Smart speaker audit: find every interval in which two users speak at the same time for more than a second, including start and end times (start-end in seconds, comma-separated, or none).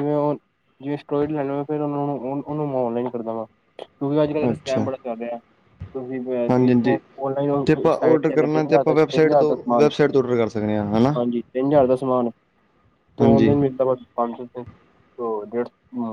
7.5-9.9